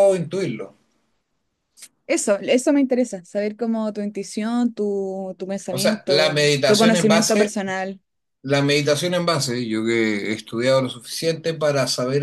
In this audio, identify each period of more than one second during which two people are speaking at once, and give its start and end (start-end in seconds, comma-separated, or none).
5.7-7.5